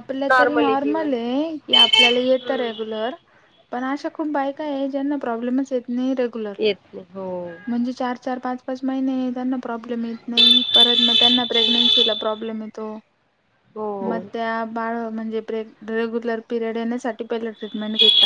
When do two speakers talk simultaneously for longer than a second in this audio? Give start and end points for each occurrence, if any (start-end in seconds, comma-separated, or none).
none